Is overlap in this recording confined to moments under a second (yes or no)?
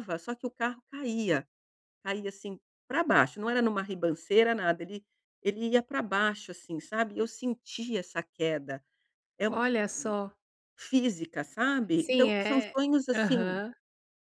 no